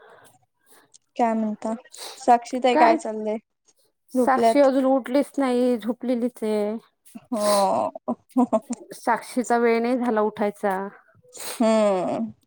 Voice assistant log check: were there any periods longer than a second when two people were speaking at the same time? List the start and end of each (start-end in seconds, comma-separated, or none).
none